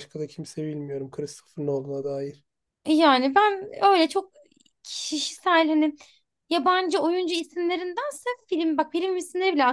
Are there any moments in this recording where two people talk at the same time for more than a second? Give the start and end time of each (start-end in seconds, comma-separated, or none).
none